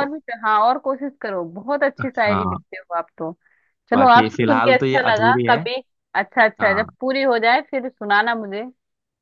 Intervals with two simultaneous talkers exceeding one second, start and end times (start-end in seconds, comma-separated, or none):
3.9-5.6